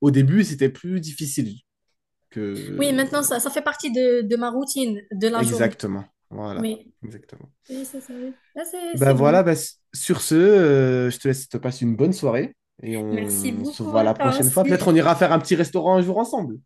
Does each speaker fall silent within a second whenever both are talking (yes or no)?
no